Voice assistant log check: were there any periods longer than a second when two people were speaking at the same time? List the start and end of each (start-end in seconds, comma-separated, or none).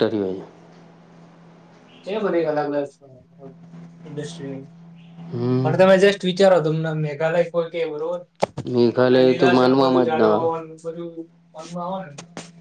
8.9-10.5